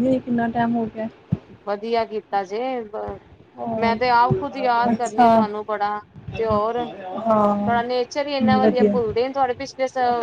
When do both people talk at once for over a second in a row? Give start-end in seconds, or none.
none